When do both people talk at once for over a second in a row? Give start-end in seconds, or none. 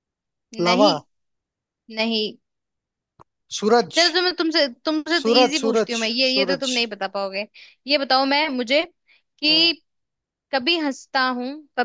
5.2-6.7